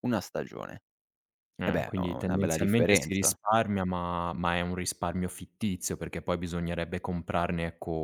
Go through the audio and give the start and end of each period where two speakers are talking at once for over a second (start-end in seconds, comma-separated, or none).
1.6-3.3